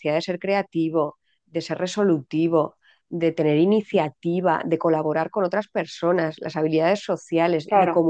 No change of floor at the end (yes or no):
yes